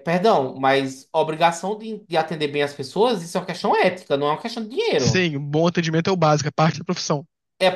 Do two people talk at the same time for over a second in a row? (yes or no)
no